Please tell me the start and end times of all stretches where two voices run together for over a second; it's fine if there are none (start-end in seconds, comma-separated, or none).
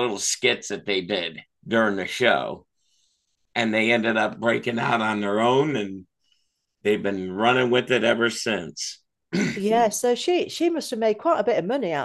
none